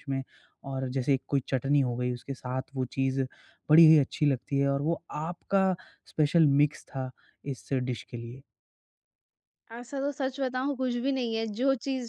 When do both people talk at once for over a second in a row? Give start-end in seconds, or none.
none